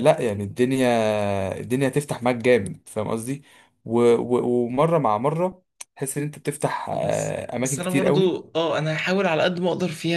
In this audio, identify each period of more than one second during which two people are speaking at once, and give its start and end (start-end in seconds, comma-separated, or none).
6.9-8.5